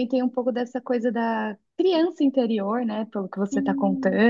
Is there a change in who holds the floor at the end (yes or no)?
no